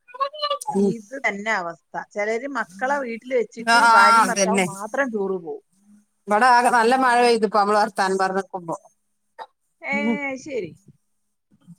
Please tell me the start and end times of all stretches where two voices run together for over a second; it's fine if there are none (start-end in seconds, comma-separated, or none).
none